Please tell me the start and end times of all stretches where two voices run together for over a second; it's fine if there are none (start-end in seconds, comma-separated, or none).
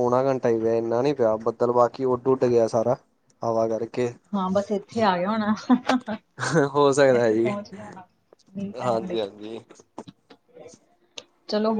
none